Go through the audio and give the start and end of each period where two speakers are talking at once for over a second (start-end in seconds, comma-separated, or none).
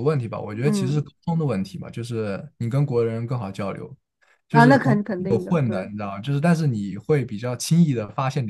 4.5-5.8